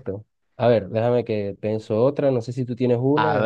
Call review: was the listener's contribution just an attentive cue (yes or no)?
no